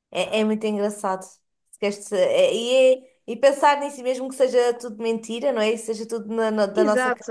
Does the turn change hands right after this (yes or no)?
yes